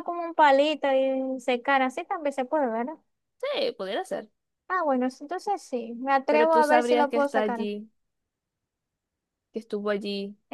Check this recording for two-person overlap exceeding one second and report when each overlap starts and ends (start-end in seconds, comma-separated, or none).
6.3-7.7